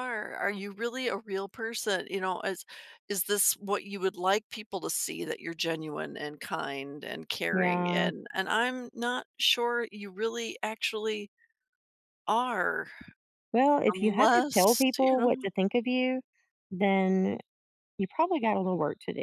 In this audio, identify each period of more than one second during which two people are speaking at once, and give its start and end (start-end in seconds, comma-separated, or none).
13.9-15.5